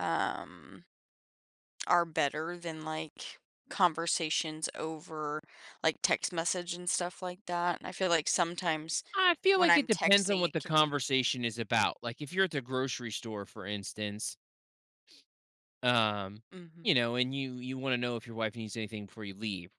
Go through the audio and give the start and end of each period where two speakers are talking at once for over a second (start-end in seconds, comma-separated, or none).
9.5-10.9